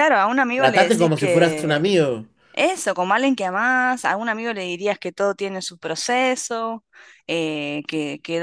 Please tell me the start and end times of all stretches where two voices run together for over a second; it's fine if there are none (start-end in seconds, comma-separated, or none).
0.6-1.9